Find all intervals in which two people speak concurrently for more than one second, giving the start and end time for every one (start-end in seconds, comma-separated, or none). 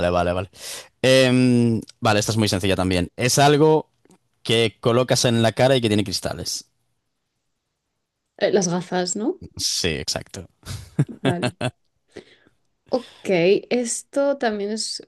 none